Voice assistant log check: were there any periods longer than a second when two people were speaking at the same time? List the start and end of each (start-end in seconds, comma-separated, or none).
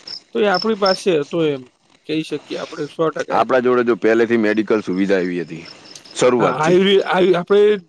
none